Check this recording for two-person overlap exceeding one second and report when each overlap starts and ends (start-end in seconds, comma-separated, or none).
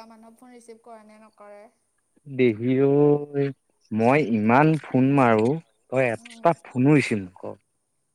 none